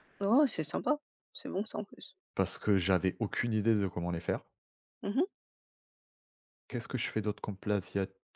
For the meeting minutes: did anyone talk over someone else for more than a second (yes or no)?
no